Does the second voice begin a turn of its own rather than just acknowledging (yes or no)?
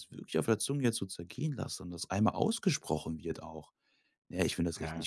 no